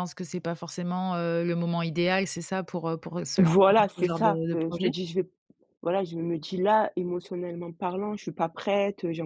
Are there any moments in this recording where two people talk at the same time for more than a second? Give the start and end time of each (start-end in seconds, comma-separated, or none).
3.4-4.9